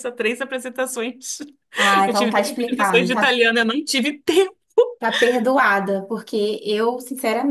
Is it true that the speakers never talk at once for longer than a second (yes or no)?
no